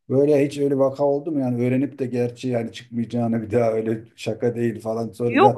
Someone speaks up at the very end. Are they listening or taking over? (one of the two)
taking over